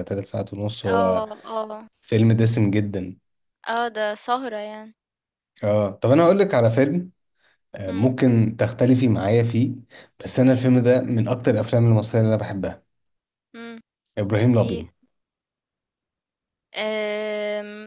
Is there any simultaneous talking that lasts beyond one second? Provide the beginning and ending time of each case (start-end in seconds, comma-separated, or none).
none